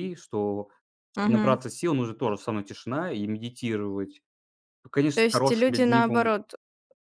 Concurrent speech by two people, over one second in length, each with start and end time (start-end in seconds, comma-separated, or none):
5.1-6.4